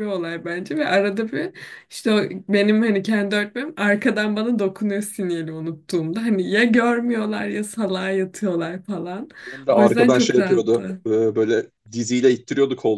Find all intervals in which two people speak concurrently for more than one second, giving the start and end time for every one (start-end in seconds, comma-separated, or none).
9.7-11.0